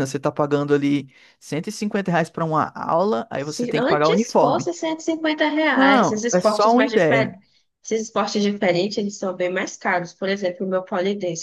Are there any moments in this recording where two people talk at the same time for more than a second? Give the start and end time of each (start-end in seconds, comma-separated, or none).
3.4-4.7, 5.7-7.3